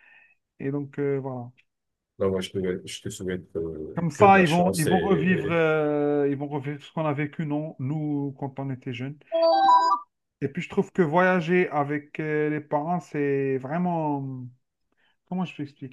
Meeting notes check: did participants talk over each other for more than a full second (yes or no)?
yes